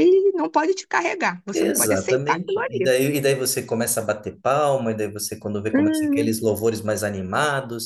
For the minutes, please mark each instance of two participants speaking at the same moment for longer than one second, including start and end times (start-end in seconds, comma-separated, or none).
1.5-2.9